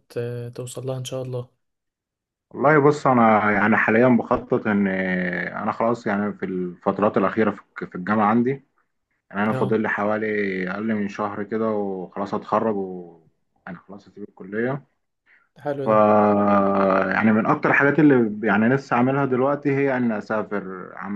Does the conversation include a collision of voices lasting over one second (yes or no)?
no